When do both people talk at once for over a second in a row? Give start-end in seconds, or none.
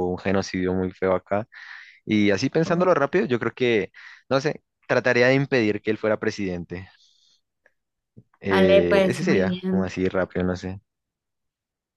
8.5-10.0